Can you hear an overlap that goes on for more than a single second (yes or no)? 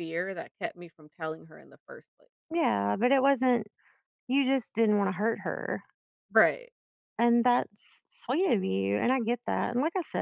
no